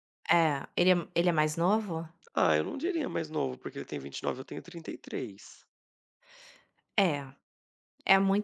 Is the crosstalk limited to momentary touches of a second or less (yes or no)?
yes